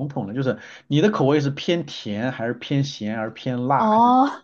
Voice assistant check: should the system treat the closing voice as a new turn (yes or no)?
yes